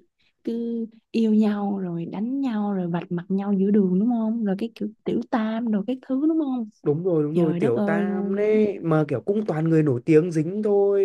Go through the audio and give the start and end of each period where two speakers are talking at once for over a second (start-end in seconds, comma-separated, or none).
7.3-8.6